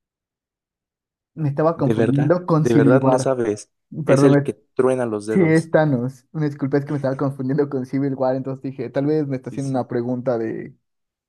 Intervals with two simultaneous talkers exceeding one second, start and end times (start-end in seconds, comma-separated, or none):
1.8-3.4